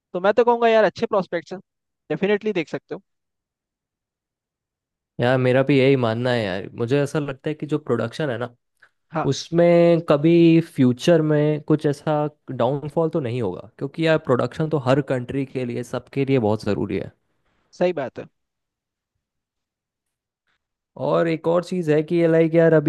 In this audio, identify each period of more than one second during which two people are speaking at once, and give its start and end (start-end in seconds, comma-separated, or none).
none